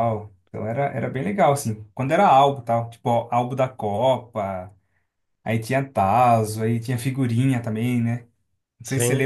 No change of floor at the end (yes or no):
yes